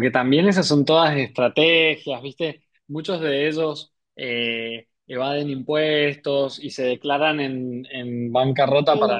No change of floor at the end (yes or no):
yes